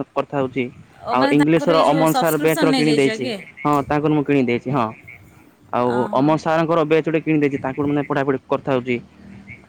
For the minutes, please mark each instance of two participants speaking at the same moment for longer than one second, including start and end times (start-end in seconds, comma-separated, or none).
1.2-3.3